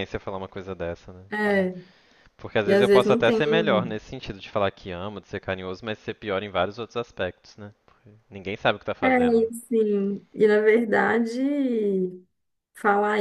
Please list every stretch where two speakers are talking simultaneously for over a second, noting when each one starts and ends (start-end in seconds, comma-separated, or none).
2.6-4.0